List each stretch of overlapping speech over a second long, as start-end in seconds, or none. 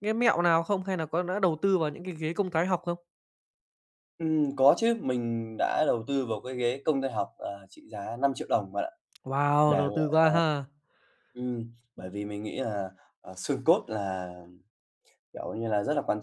none